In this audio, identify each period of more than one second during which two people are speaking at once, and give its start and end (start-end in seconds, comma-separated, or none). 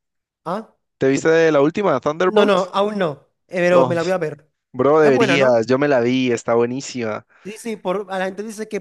none